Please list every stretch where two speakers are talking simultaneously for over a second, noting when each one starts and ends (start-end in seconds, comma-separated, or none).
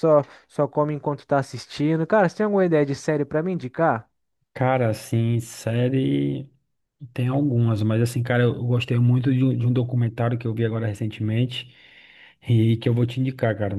none